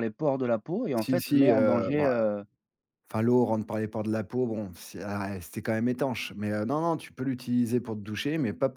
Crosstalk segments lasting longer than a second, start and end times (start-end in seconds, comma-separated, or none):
1.0-2.3